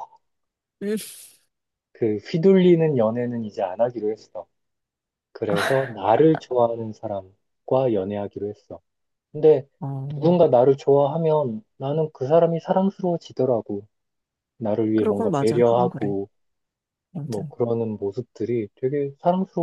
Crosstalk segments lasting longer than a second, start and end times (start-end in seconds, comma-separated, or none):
14.9-16.1